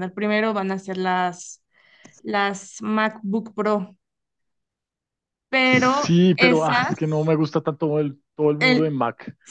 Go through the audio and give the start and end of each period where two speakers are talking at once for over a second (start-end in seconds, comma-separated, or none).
5.6-7.3